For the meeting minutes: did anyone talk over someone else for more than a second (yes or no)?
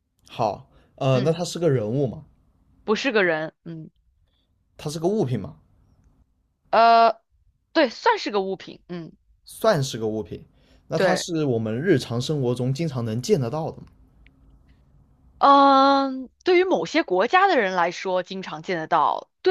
no